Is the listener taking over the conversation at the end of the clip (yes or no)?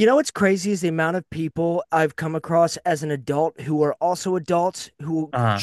no